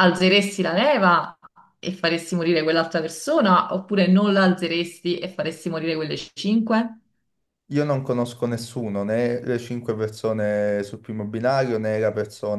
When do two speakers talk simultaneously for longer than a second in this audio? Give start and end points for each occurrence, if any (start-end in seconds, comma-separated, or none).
none